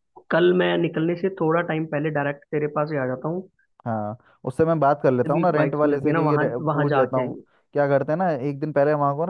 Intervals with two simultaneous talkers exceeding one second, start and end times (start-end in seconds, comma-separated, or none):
5.3-7.4